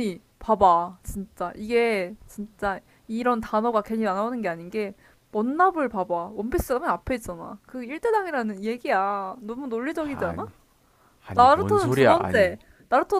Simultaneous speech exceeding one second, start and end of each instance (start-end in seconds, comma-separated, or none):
11.3-12.6